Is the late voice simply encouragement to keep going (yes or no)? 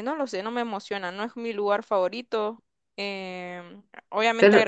yes